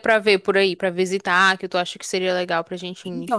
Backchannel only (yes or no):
no